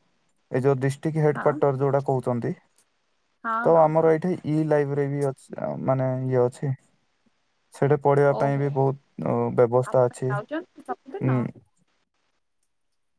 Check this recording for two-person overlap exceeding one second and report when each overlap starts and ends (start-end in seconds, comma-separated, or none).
9.9-11.3